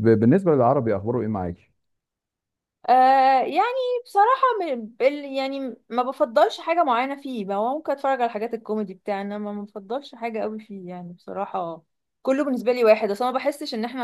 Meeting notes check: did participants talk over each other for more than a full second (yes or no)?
no